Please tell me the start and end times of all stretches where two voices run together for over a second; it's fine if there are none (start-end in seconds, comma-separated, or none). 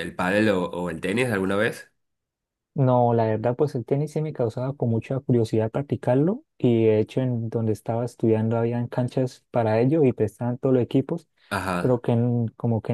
none